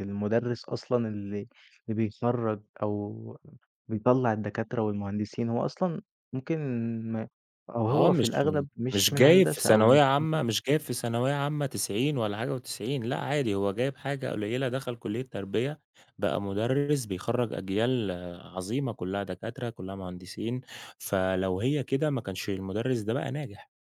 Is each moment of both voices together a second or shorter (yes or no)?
no